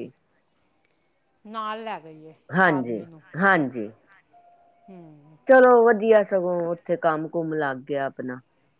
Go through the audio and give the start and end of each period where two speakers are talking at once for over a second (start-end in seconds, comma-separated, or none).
none